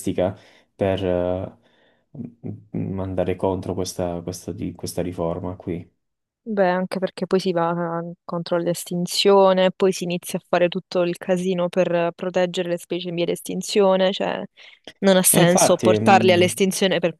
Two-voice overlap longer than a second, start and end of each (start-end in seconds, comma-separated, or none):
15.3-16.6